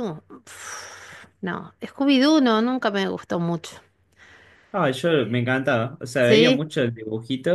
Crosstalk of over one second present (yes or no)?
no